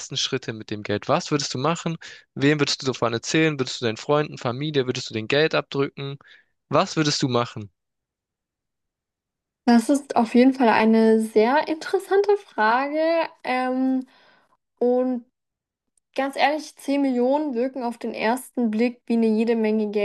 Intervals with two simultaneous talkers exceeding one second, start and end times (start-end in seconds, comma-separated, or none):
none